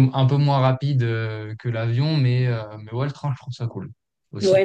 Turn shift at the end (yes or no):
yes